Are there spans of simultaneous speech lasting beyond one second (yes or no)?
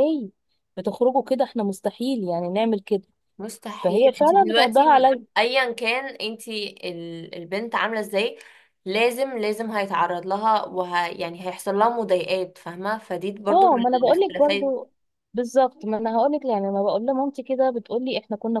yes